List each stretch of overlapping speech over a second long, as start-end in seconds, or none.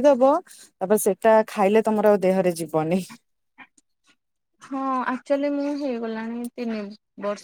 none